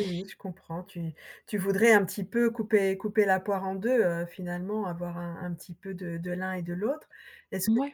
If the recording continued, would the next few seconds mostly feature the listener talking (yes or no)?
no